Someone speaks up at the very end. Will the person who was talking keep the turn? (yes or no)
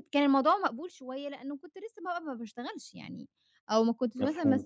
yes